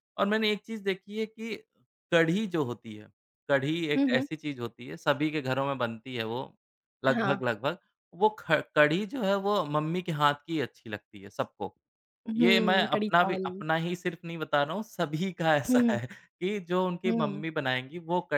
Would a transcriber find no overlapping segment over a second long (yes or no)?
no